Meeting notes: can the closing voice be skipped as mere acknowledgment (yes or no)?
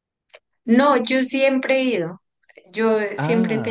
yes